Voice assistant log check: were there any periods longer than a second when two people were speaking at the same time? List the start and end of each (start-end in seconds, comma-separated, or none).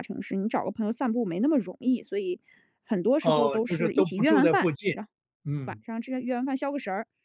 3.2-4.9